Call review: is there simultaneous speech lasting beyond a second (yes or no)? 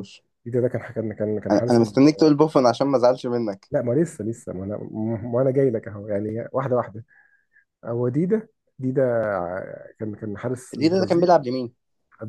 no